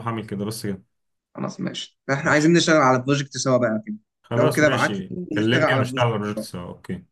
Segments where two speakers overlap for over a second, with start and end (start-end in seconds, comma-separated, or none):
4.4-6.1